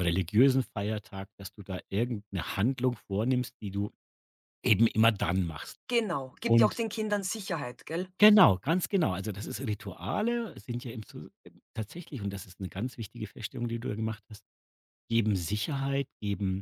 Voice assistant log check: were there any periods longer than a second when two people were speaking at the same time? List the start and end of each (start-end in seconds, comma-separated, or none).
none